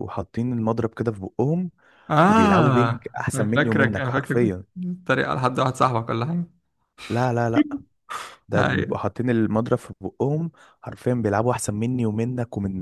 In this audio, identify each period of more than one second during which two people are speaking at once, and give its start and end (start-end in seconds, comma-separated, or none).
2.3-4.6